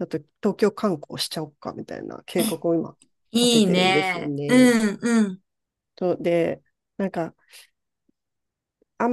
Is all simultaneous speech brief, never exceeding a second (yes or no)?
no